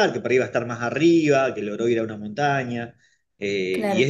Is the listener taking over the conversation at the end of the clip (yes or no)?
no